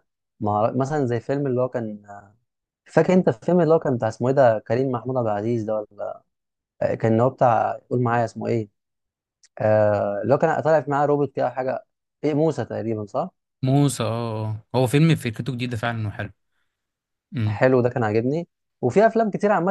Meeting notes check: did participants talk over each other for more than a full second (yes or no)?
no